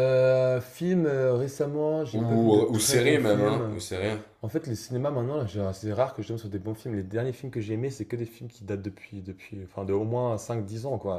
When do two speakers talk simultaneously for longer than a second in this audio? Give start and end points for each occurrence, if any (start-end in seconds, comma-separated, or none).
2.1-3.8